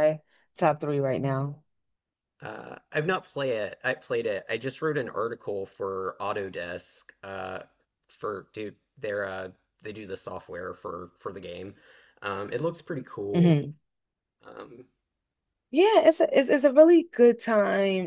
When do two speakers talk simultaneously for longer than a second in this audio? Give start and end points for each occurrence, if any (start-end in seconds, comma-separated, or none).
none